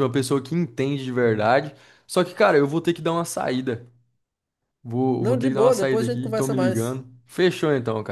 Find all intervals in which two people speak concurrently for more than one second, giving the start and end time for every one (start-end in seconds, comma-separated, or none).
5.2-7.0